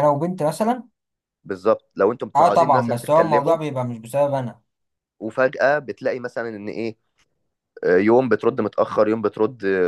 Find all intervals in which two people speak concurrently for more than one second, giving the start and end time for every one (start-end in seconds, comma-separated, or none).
2.4-3.6